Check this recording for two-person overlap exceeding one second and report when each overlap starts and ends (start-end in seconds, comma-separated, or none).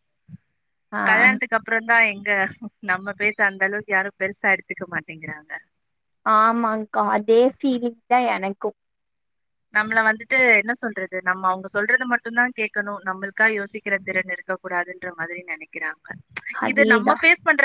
none